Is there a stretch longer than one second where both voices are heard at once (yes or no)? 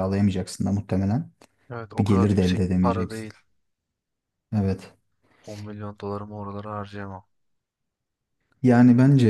yes